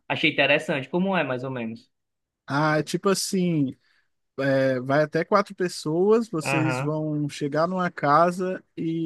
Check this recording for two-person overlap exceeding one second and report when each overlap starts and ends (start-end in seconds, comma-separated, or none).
none